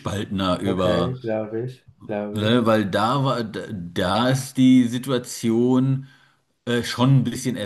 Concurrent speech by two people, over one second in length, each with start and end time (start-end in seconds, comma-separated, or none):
none